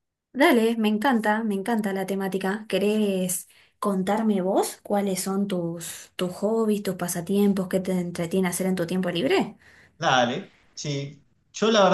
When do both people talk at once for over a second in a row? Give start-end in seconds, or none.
none